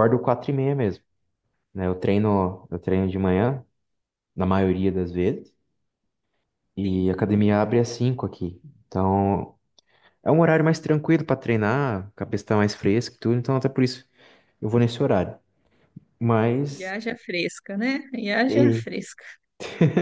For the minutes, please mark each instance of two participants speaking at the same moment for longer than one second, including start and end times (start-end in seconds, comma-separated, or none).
none